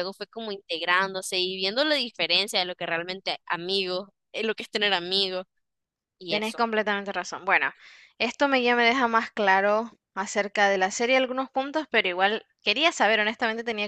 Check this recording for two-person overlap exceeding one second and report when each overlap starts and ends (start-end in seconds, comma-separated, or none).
none